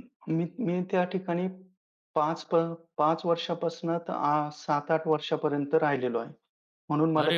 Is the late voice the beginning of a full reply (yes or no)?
yes